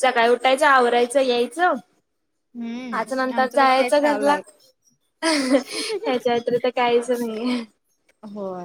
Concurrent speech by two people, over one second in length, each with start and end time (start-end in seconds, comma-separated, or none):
3.0-4.4